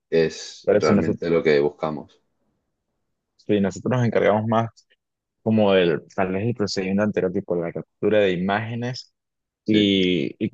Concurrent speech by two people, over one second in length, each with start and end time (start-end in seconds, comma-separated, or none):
none